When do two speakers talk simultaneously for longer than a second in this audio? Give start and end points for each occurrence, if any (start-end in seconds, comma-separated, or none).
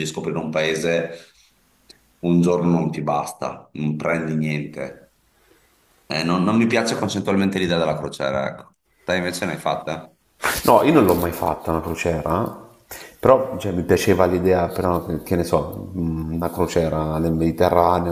none